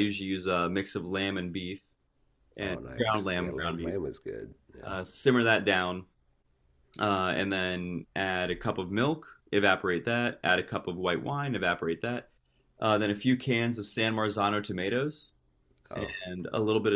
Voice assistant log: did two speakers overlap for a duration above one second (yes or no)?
yes